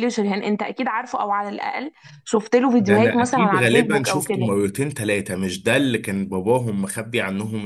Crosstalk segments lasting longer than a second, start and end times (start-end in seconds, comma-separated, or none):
2.8-4.5